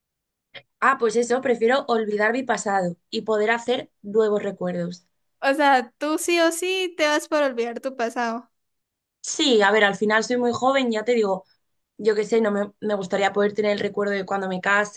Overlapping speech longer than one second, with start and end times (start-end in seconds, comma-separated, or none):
none